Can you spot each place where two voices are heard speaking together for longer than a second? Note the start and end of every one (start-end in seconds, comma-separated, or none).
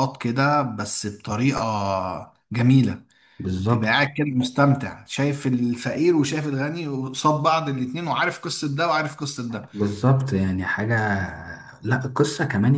none